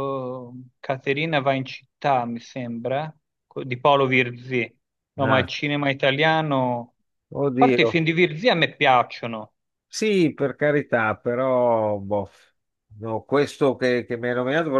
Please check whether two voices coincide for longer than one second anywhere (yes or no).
no